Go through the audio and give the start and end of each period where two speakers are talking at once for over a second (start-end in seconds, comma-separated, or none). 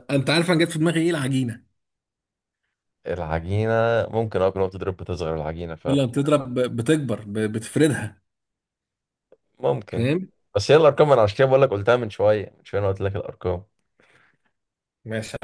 none